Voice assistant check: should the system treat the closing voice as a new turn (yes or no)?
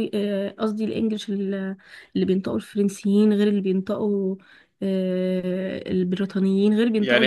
yes